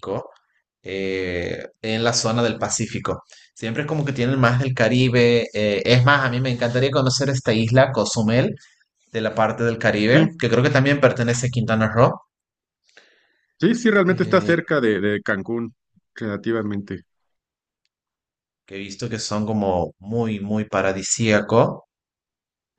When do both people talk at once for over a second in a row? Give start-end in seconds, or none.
none